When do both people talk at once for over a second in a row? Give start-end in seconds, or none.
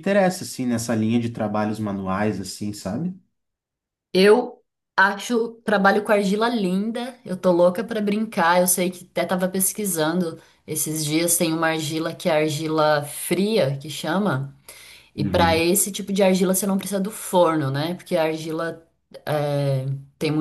none